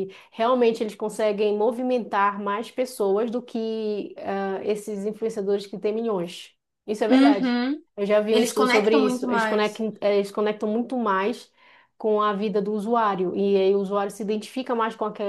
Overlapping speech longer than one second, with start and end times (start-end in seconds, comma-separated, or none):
8.3-9.8